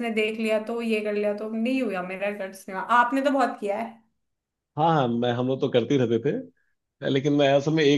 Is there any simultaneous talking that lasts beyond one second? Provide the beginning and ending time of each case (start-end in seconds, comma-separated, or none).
none